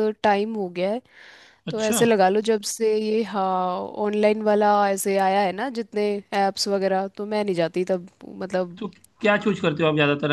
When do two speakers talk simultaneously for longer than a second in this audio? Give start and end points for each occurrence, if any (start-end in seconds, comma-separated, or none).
none